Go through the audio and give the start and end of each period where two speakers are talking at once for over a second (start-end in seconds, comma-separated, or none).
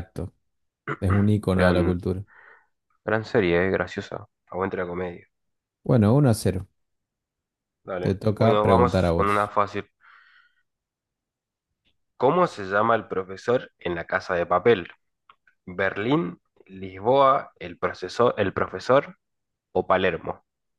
8.0-9.5